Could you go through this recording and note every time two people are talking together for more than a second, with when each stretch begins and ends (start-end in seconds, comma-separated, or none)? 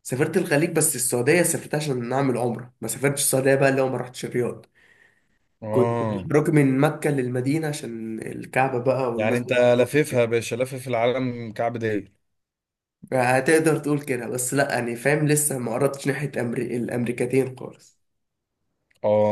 none